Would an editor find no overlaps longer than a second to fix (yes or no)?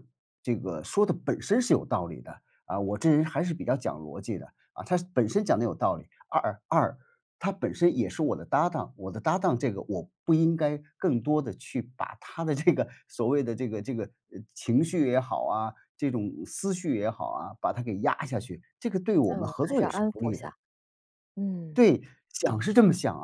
no